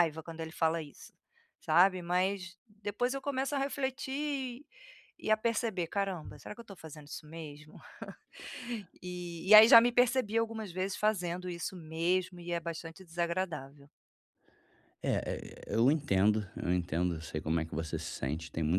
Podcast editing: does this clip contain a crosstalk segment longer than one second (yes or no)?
no